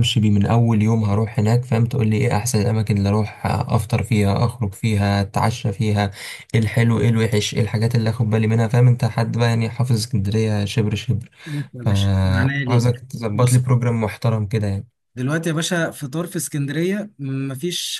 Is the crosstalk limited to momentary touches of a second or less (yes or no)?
no